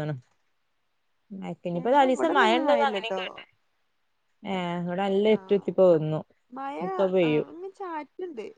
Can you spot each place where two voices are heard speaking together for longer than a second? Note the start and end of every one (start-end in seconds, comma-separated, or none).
1.8-3.2